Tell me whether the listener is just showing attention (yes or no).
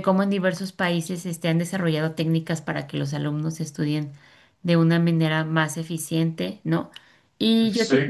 yes